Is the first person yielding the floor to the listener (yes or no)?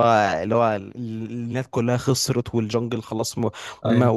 no